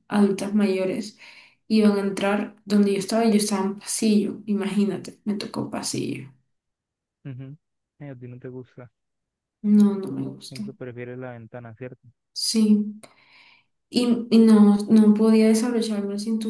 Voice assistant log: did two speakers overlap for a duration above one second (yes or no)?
no